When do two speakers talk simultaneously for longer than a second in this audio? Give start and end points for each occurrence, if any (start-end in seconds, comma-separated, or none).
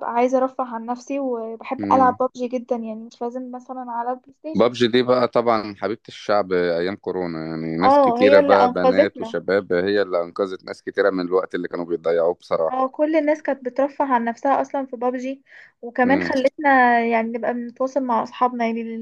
7.8-9.4